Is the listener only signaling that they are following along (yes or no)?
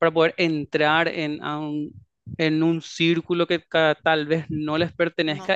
yes